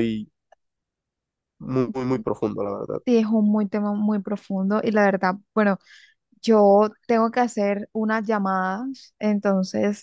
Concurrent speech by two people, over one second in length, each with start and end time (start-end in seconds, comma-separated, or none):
none